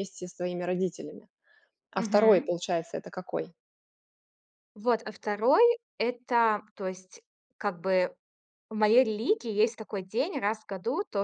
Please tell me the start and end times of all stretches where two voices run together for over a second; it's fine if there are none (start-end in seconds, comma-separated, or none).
none